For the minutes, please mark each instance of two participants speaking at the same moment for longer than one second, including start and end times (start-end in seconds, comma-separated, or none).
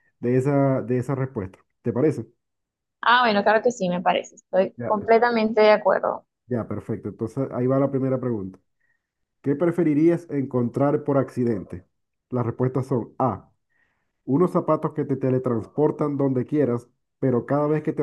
none